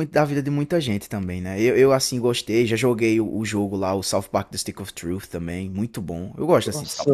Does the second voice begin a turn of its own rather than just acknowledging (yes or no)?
yes